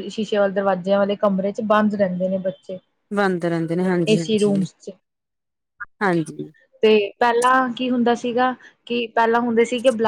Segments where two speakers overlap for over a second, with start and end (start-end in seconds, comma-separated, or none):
none